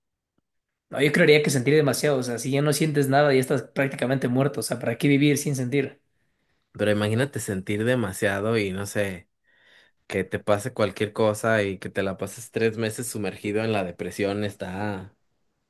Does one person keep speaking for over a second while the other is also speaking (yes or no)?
no